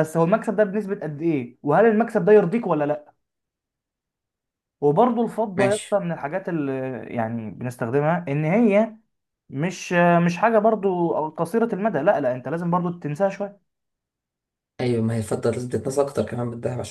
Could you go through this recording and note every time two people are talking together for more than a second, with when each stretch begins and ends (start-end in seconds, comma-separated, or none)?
none